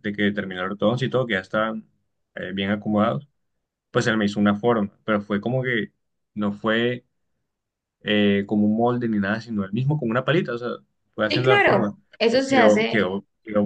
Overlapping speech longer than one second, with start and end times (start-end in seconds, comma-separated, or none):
11.3-13.0